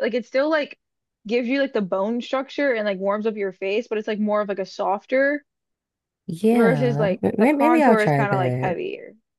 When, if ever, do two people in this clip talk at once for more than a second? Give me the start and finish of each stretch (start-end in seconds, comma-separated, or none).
6.5-8.8